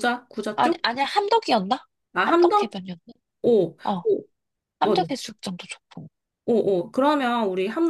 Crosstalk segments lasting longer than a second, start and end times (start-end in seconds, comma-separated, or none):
none